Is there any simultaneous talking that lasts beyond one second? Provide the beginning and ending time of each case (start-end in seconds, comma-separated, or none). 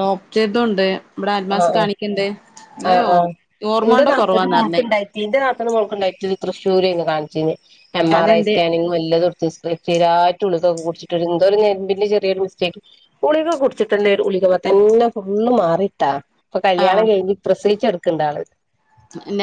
none